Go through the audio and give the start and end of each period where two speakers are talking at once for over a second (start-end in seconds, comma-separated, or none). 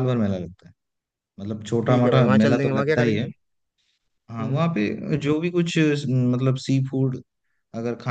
1.9-3.3